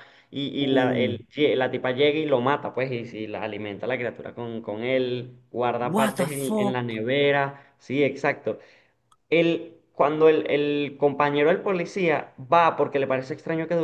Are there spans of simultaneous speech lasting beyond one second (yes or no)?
yes